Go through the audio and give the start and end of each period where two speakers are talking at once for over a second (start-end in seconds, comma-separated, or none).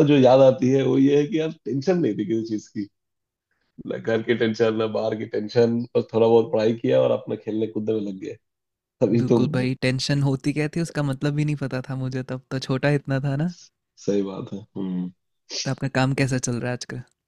none